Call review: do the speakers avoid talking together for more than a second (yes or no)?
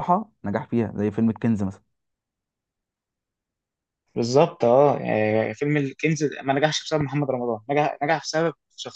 yes